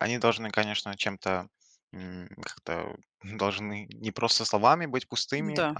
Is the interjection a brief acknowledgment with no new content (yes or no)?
yes